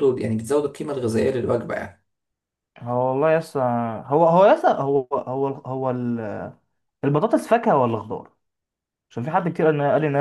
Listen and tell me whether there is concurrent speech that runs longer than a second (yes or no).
no